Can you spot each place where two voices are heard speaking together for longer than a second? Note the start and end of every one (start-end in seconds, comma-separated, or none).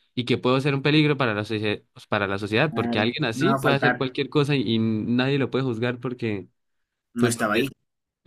2.7-4.1